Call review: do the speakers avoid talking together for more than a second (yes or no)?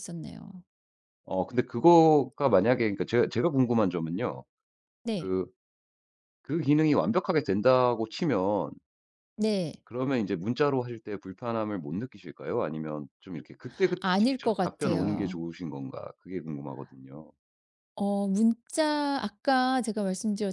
no